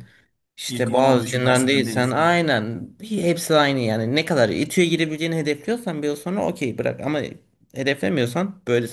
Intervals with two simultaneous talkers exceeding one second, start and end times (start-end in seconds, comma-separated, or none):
0.7-2.4